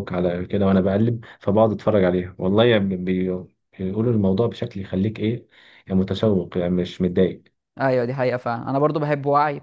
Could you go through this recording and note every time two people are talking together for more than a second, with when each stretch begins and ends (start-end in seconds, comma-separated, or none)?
none